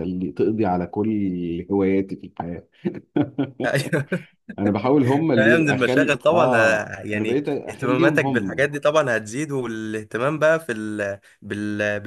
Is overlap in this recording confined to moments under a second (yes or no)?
no